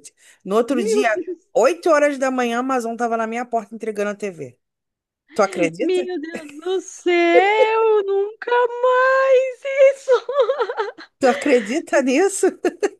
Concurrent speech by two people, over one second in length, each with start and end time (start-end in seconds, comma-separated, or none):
none